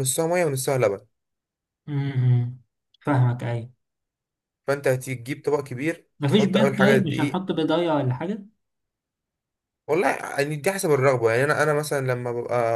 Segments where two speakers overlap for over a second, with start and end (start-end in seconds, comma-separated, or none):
6.2-7.4